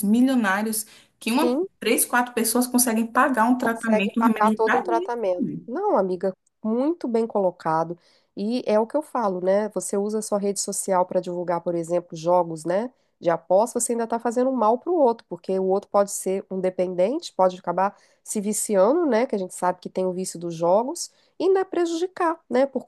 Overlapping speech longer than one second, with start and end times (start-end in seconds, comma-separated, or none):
3.6-5.1